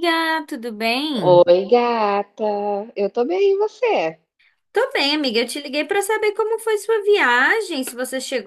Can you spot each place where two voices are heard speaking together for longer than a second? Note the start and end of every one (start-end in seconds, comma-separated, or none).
none